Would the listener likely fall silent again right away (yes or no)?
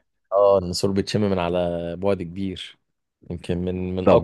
no